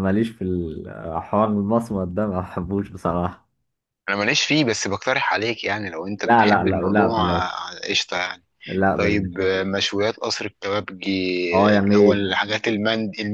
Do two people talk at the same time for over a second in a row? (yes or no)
yes